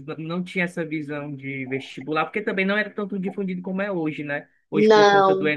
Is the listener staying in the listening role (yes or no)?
yes